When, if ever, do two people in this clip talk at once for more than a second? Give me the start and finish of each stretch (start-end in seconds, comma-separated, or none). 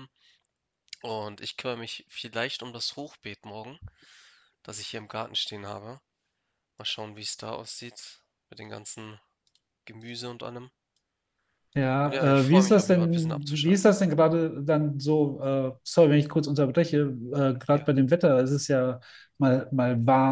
12.0-13.9